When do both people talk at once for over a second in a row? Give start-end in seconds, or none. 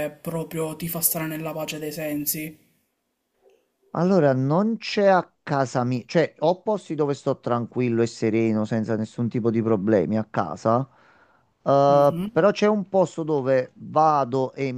none